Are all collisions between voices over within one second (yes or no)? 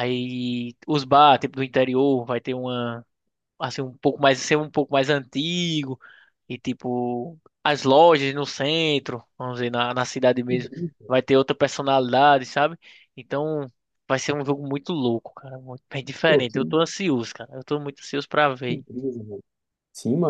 yes